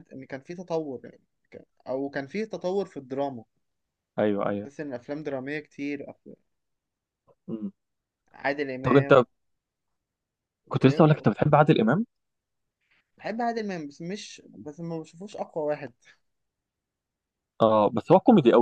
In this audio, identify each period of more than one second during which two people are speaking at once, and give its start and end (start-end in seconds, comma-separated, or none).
none